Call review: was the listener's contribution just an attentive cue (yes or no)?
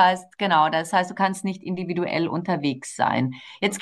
yes